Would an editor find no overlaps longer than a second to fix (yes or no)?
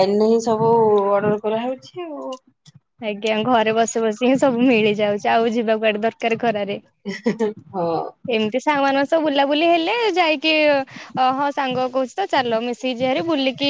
yes